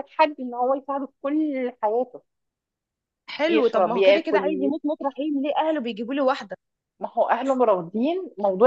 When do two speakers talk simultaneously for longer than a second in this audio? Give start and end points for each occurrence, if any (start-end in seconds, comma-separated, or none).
3.5-4.7